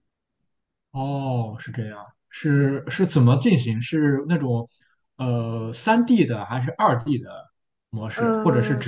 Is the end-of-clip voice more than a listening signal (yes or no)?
no